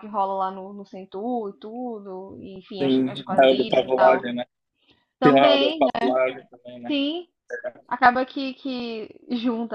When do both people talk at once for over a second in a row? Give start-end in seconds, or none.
2.8-4.2